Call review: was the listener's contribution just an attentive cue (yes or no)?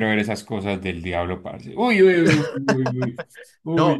no